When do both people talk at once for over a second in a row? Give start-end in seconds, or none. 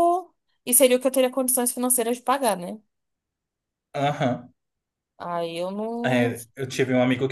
none